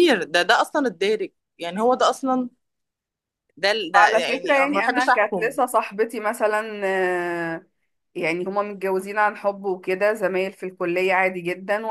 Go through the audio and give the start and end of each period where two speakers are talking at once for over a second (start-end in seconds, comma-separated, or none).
3.9-5.5